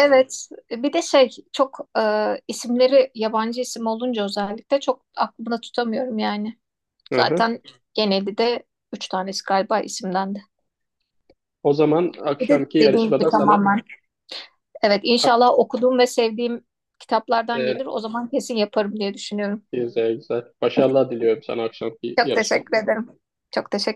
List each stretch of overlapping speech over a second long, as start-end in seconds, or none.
12.4-13.7